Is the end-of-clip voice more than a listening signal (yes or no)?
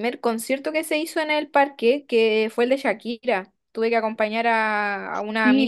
yes